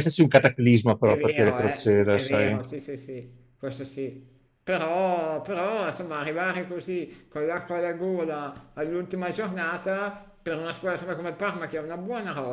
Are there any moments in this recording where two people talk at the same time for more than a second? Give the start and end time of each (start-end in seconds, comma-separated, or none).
1.0-2.6